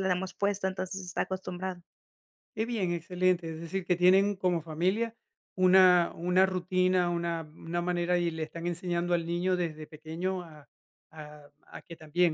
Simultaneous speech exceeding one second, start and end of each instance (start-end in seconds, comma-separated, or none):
none